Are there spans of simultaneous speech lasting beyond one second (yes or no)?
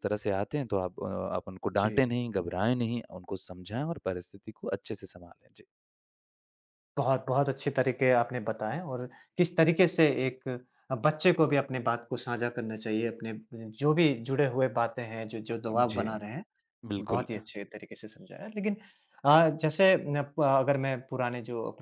no